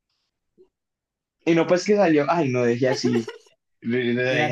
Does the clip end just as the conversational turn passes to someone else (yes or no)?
yes